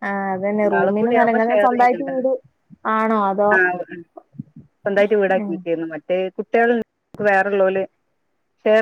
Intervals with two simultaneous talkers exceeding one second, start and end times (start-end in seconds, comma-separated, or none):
0.6-2.1